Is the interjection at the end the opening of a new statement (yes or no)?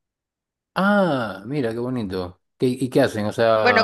yes